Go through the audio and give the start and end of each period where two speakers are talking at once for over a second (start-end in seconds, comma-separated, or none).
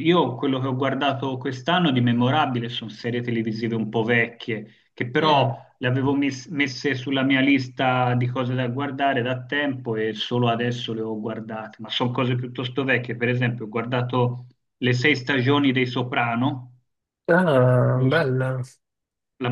none